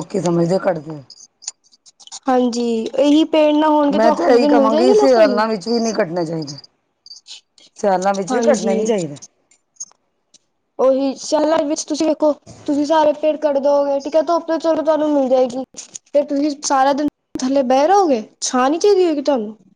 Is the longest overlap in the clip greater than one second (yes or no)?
yes